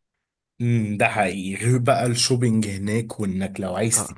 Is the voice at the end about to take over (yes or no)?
no